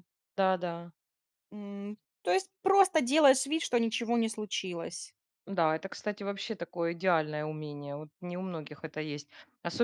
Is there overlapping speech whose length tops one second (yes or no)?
no